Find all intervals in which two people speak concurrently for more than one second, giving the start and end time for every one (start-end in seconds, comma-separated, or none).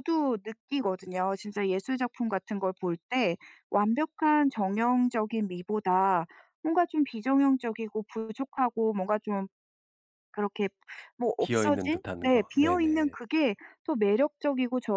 11.4-13.2